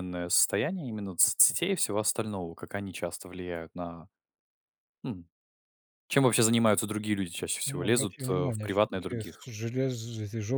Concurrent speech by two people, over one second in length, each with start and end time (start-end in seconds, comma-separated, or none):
7.7-9.4